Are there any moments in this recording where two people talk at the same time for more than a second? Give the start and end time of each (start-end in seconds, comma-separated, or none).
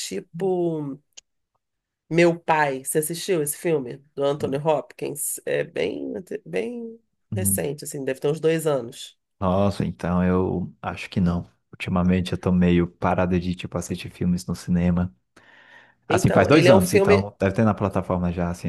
16.1-17.3